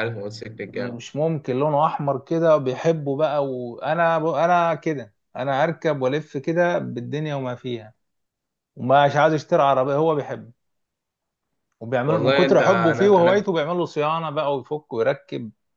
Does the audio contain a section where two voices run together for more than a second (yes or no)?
yes